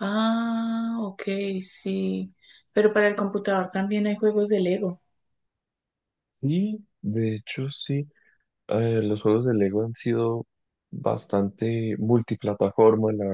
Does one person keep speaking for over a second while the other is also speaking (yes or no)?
no